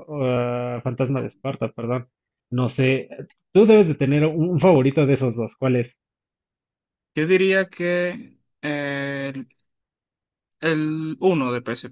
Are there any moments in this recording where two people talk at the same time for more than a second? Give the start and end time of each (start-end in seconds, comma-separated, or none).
none